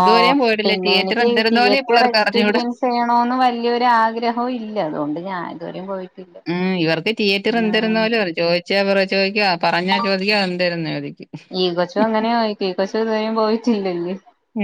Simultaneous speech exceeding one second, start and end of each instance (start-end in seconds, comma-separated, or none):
0.7-2.5